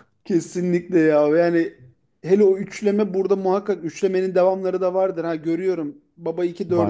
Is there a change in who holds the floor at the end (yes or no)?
no